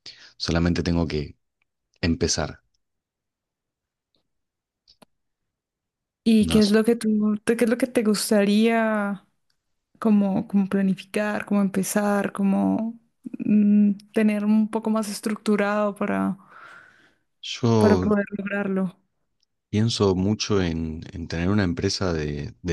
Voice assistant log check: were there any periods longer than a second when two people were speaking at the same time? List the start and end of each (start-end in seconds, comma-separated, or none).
none